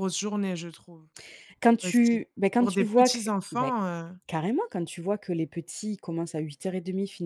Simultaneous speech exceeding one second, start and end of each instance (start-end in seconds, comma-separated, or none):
1.8-3.7